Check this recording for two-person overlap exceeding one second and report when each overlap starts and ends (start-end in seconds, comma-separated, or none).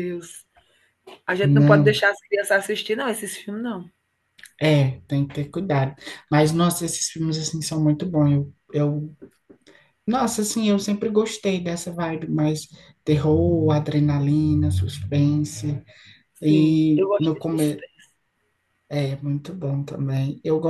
16.4-17.8